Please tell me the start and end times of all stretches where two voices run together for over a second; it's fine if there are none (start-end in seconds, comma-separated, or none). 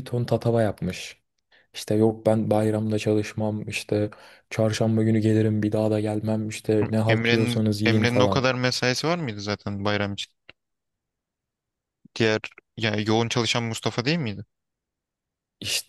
7.1-8.5